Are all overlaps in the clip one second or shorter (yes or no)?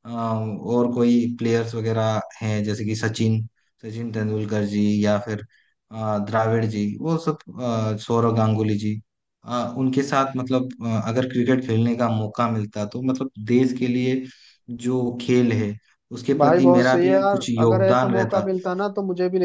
no